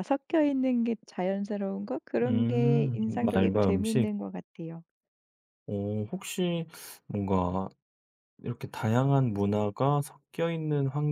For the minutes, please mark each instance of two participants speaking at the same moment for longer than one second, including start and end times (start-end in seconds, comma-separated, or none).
2.2-4.1